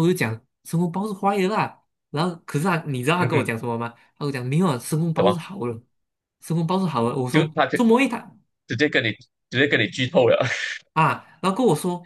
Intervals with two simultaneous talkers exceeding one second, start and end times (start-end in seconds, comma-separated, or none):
none